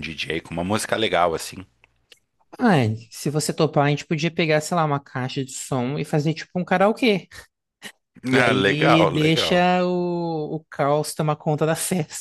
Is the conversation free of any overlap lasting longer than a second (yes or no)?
no